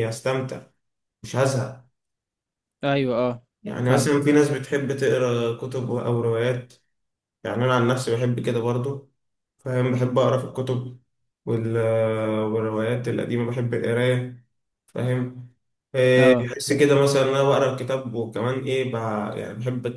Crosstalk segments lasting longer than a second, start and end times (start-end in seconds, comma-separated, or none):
none